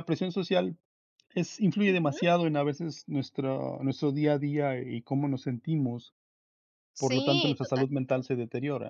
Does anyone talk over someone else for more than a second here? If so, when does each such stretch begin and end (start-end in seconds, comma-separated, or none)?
7.0-8.3